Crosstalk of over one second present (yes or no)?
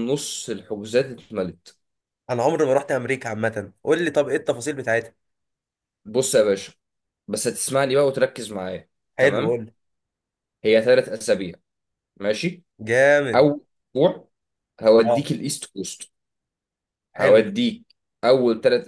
no